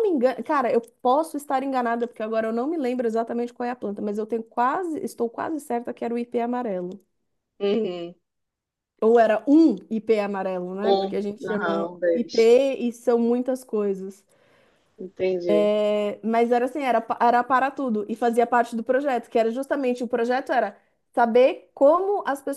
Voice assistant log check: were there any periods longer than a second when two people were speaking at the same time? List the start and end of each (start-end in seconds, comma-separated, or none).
10.8-12.5